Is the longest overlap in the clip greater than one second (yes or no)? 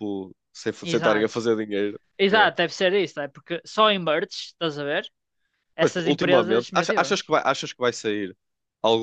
yes